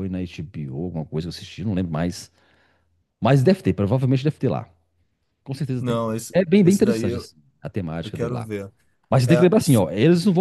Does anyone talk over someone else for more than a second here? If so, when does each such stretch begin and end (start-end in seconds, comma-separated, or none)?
5.8-7.3